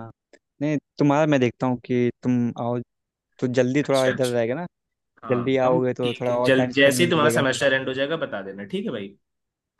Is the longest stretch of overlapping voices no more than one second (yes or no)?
no